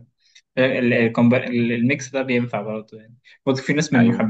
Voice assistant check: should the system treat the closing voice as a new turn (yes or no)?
no